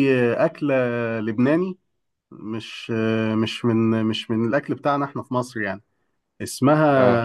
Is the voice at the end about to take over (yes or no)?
no